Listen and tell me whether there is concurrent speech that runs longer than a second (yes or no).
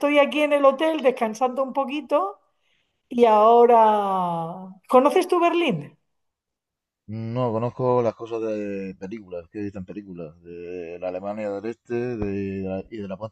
no